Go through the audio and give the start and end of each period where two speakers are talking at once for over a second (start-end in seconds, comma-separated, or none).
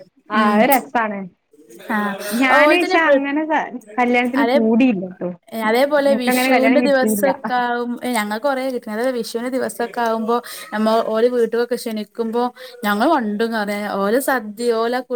none